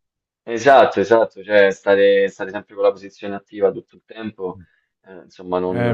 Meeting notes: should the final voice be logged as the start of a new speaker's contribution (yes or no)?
yes